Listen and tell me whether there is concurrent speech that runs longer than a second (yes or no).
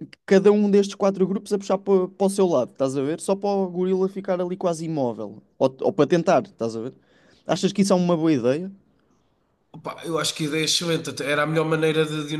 no